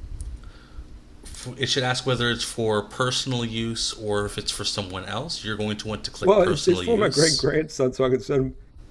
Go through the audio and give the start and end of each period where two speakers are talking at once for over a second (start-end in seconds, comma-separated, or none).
6.2-7.5